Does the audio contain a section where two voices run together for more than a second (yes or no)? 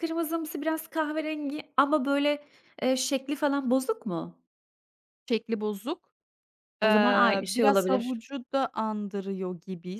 yes